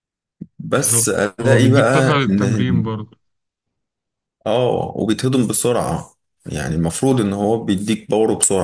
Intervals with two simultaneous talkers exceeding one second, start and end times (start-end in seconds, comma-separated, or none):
0.7-2.8